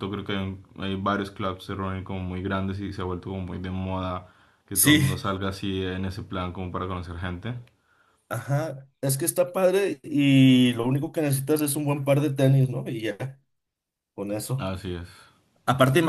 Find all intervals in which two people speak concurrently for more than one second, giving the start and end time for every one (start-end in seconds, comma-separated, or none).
none